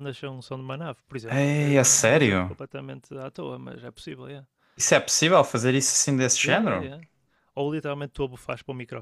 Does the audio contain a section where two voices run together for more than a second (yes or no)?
yes